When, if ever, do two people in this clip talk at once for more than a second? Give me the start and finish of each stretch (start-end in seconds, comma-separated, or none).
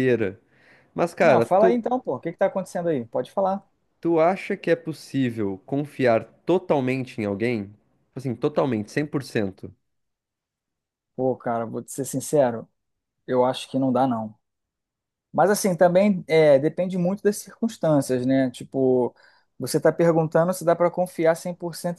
none